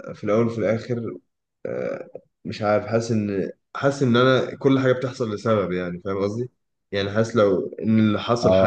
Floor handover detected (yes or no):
no